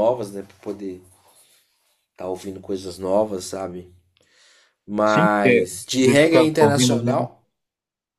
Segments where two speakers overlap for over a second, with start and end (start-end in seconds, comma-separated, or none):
5.0-7.3